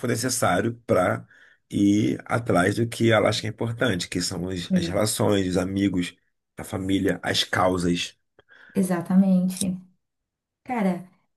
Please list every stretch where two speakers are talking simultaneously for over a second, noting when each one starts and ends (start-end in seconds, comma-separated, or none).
none